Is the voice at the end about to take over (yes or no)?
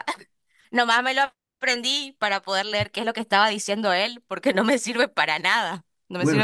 yes